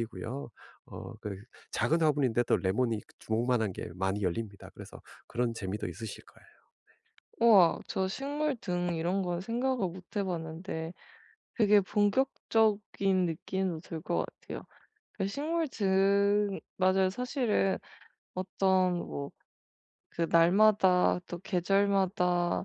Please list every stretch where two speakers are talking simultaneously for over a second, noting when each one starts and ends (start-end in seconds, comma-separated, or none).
none